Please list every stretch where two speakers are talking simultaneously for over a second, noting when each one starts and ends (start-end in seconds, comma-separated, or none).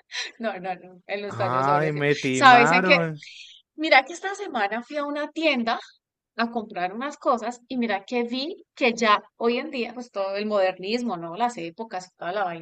1.3-3.0